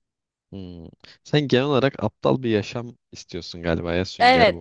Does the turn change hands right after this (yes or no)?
yes